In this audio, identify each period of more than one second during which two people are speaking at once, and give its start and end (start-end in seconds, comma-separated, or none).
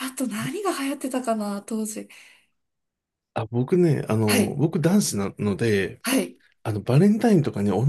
none